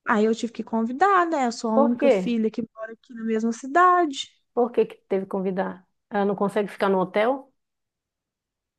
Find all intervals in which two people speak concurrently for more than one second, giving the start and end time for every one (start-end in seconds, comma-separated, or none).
none